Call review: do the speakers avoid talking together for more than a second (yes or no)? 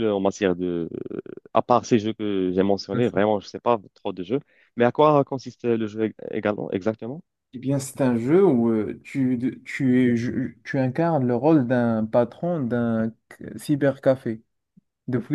yes